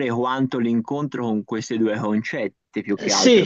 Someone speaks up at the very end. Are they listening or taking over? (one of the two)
taking over